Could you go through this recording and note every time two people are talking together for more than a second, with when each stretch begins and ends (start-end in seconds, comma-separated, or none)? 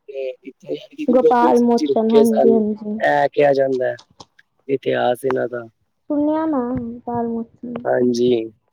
1.1-2.6